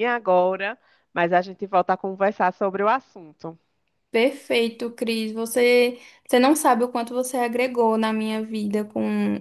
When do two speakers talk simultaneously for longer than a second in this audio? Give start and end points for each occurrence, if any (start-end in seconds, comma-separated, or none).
none